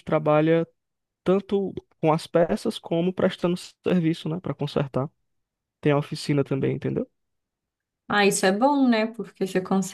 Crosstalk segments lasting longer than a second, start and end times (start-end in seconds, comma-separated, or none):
none